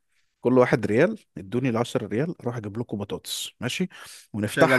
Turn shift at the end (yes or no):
no